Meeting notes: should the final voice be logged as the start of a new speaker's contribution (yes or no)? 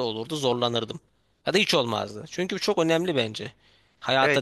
yes